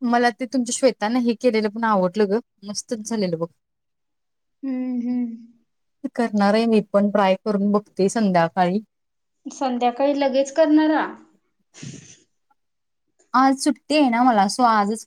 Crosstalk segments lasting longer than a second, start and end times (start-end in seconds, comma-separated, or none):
none